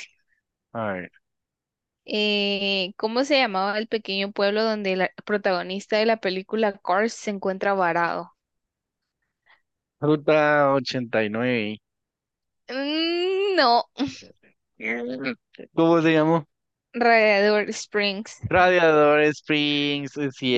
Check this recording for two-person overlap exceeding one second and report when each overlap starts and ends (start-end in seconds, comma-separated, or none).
none